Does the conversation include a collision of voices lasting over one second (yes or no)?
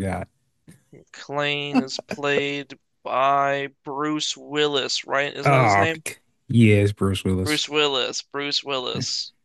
no